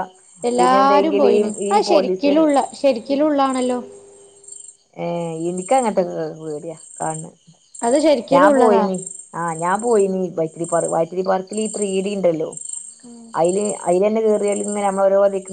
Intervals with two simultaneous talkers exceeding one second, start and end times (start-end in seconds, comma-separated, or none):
0.6-2.3